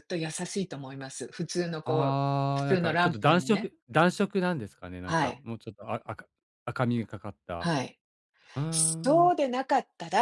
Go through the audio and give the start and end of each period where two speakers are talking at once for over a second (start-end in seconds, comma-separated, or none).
1.9-3.7